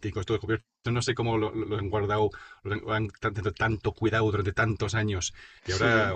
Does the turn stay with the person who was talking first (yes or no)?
yes